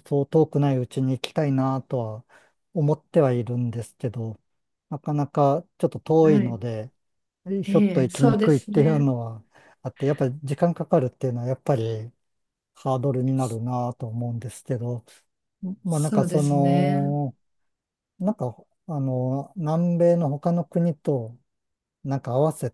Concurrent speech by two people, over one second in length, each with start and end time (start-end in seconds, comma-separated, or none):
7.6-9.1, 15.9-17.1